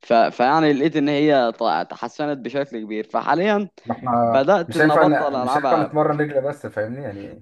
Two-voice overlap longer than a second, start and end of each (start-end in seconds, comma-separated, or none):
4.7-6.0